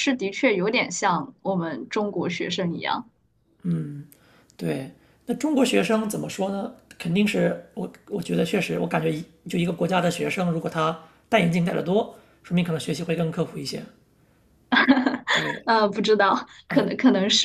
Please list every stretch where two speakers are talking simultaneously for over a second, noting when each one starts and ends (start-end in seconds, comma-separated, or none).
none